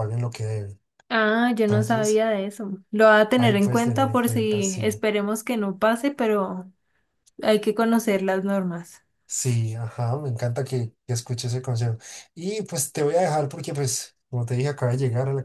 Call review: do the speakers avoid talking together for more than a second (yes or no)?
no